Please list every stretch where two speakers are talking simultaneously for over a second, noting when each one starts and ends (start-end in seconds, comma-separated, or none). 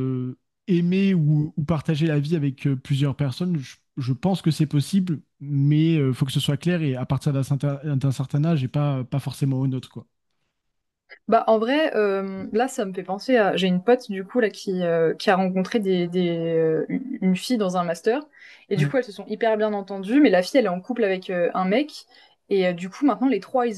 none